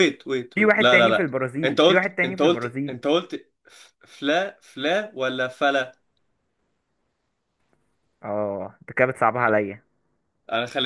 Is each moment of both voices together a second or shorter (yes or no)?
no